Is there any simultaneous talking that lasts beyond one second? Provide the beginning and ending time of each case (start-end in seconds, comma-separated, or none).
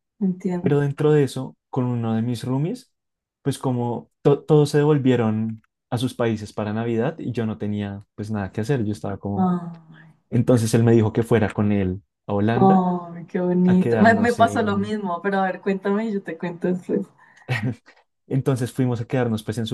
13.7-14.9